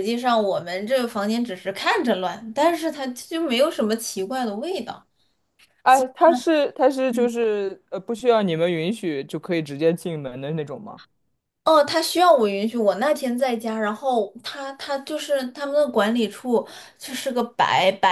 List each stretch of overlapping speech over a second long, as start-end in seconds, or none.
none